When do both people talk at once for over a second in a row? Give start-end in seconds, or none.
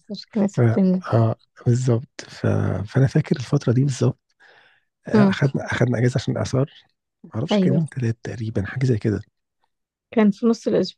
none